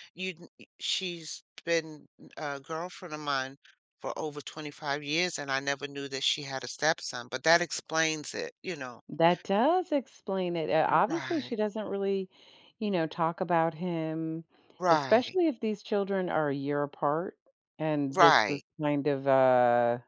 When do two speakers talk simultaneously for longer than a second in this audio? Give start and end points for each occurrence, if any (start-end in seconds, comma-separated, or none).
none